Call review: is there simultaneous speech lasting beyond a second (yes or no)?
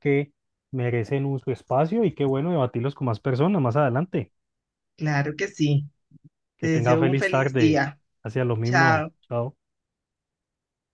yes